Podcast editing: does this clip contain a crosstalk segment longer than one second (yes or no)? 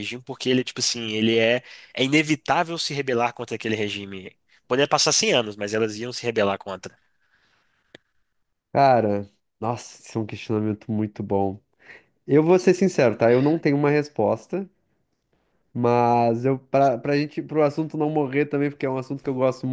no